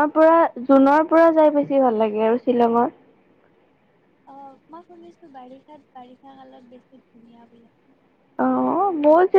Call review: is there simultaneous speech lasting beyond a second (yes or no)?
no